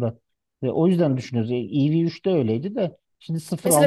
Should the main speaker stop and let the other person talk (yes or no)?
no